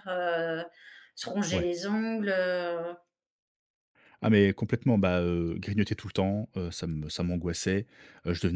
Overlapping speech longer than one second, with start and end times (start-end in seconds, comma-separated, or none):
none